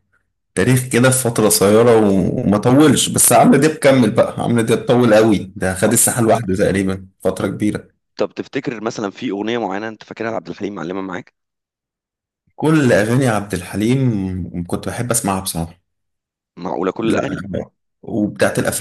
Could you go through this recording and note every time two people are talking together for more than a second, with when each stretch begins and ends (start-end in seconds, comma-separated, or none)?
none